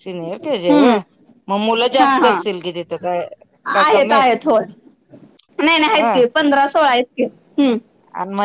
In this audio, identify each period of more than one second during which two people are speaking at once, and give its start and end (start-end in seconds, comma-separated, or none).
none